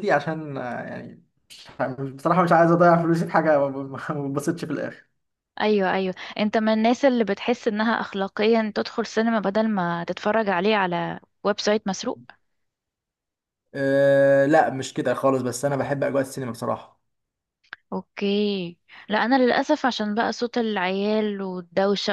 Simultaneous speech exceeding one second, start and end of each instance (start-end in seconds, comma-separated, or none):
none